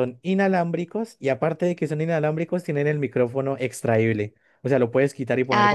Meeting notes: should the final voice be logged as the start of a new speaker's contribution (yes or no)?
yes